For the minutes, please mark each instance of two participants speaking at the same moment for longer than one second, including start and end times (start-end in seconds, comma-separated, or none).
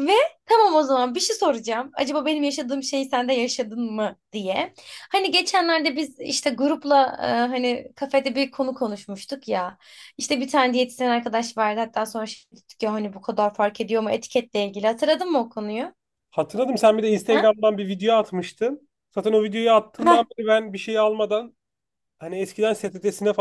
none